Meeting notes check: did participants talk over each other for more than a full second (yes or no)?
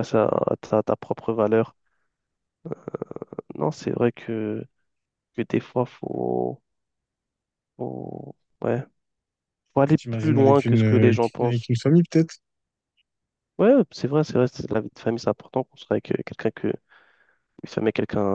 yes